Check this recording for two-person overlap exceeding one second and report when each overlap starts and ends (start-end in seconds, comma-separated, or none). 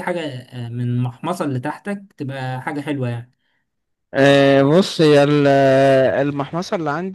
none